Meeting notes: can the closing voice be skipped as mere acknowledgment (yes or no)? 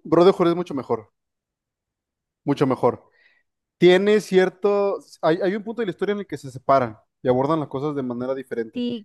no